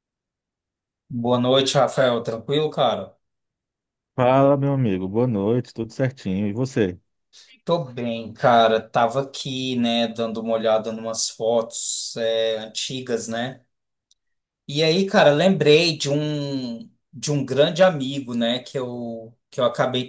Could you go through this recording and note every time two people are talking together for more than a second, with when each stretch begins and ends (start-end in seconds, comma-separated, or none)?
none